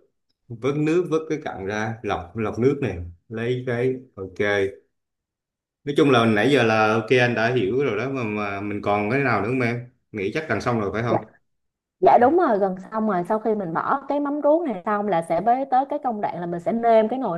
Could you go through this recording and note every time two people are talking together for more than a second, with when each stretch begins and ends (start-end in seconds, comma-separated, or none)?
none